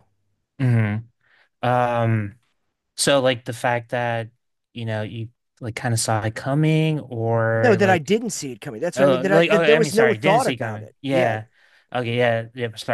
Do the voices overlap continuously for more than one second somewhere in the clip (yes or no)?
yes